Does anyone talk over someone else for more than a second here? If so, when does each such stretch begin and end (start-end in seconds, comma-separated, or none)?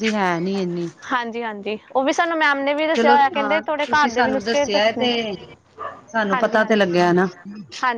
3.0-5.1